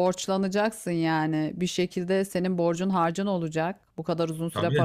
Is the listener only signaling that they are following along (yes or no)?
yes